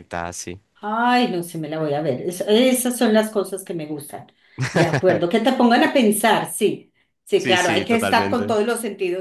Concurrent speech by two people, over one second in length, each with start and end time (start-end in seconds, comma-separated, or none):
7.4-8.6